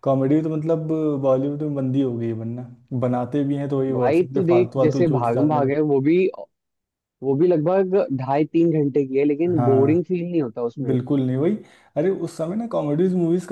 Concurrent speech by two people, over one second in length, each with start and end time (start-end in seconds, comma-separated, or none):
3.9-5.9